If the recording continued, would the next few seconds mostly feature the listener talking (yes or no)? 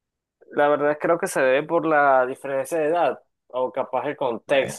yes